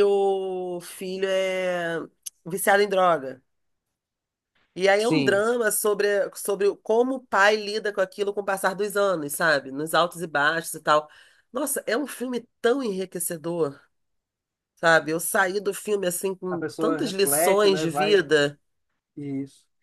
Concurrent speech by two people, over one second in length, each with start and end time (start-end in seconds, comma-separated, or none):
16.5-18.2